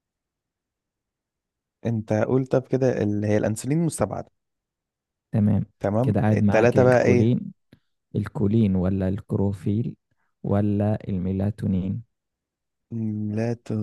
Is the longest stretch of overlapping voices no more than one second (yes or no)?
no